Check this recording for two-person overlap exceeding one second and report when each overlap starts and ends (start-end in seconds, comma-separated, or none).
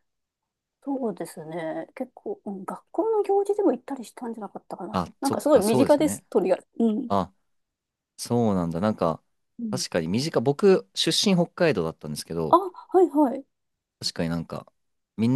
4.9-6.2